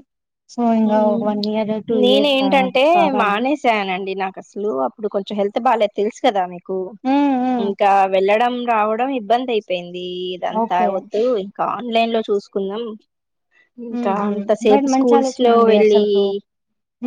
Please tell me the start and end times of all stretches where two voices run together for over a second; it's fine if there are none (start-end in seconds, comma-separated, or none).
14.0-16.0